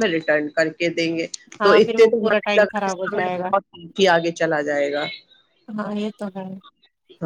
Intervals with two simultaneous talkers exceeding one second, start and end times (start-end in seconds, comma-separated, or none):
1.6-3.5